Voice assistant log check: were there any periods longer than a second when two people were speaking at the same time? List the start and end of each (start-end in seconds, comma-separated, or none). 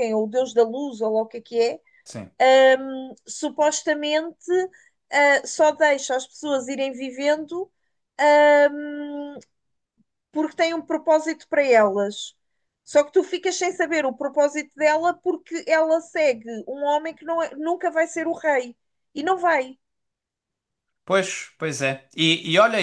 none